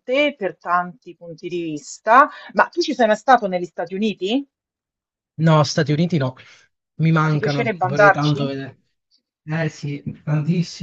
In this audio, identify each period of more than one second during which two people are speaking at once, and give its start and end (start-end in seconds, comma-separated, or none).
7.2-8.5